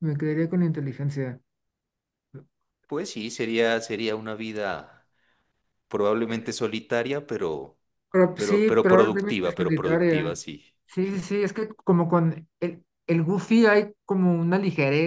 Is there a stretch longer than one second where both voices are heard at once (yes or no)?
yes